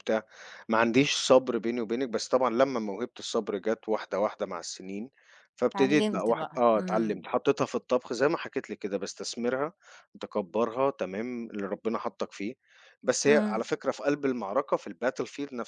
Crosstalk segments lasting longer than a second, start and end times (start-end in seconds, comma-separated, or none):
5.8-7.3